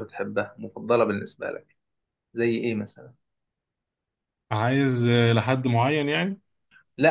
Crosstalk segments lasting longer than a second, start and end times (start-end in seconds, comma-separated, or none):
none